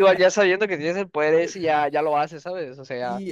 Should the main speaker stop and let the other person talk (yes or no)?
yes